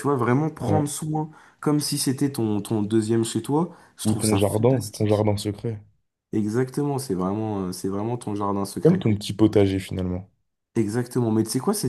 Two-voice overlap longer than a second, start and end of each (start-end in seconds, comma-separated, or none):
4.0-5.3